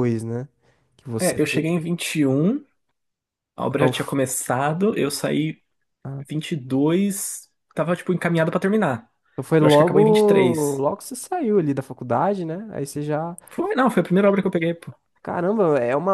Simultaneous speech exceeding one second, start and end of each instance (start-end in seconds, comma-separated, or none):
9.6-10.8